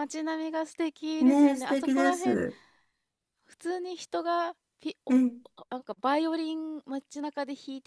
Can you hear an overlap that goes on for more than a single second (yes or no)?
yes